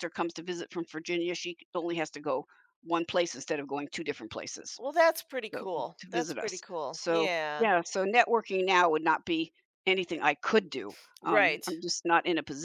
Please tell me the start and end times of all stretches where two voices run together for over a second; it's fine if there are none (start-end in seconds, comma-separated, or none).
5.5-7.7